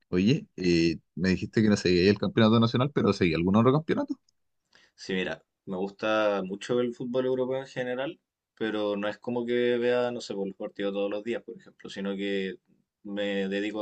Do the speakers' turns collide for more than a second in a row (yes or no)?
no